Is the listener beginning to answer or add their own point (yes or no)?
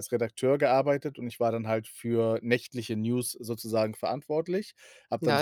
yes